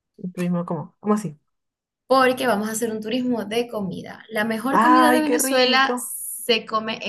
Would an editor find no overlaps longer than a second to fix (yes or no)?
no